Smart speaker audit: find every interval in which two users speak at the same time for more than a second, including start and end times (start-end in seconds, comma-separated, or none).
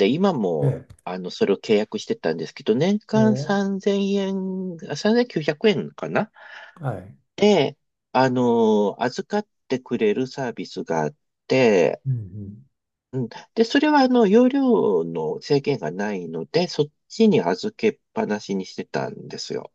none